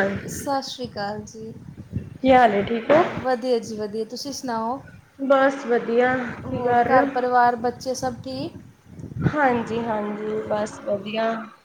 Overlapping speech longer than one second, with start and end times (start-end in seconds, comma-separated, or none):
none